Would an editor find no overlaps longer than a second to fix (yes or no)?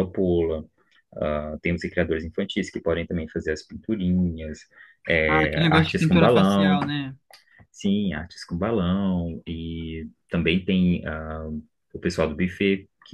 no